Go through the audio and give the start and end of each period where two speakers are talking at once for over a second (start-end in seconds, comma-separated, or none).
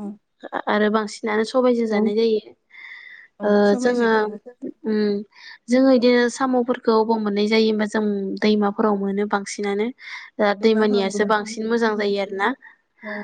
10.6-12.1